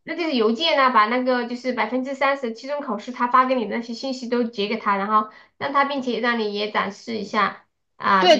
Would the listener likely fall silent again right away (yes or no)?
no